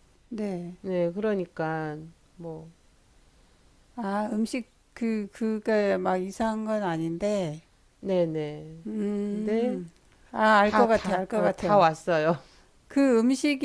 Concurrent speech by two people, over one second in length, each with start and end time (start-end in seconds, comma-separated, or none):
10.6-11.9